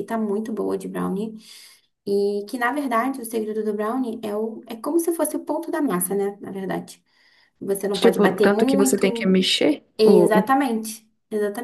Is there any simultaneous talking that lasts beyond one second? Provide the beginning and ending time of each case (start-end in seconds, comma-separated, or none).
7.9-9.3